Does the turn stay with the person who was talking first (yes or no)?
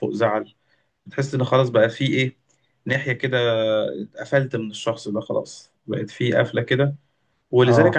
yes